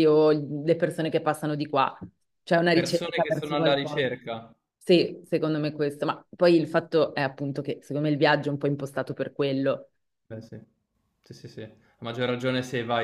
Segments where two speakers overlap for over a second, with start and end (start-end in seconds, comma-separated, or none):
2.7-4.0